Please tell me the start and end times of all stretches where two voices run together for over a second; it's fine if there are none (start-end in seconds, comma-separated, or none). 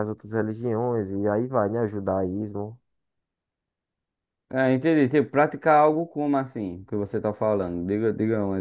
none